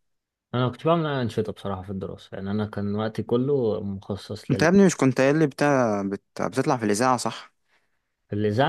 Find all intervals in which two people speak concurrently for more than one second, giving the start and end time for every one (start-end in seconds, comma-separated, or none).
none